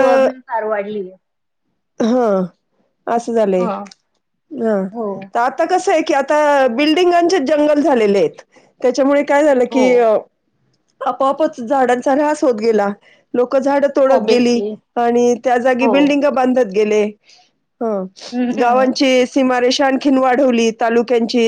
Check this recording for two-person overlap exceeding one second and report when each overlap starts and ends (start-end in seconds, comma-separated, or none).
none